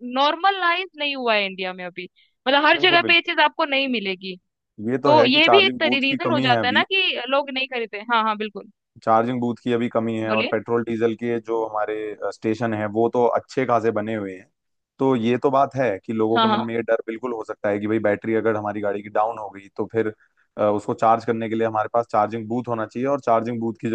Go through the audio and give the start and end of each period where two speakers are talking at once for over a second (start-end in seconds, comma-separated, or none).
5.0-6.8